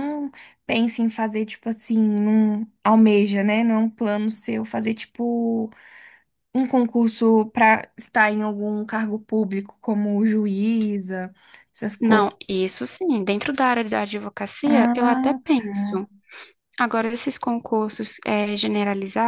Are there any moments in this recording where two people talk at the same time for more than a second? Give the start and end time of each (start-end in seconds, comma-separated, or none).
14.7-16.0